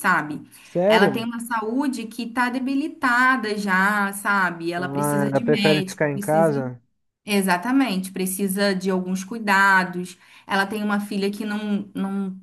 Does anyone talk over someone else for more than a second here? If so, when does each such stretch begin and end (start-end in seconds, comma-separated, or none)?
4.8-6.5